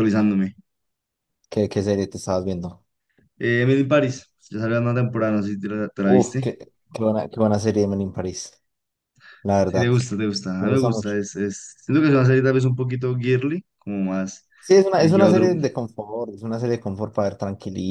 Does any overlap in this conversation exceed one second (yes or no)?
no